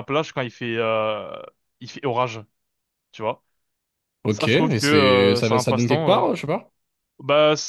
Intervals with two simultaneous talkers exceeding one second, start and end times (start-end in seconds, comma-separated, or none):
4.3-6.2